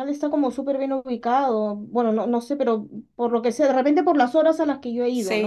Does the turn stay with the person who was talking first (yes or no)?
no